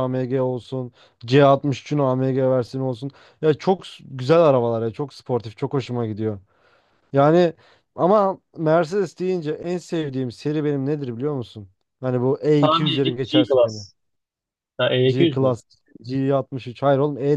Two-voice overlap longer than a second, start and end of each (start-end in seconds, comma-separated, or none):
12.6-13.8